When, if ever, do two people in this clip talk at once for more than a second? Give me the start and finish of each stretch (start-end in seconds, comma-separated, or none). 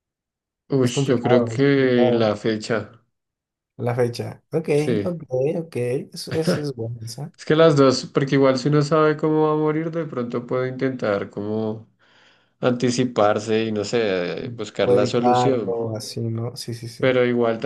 0.8-2.3, 14.4-15.8